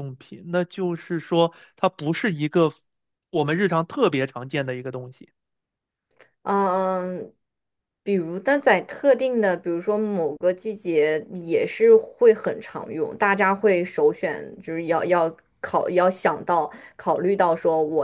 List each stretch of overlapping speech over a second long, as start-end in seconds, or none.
none